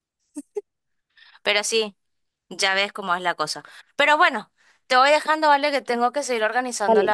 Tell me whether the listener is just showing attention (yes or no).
yes